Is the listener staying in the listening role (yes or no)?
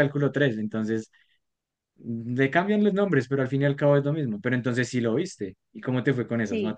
no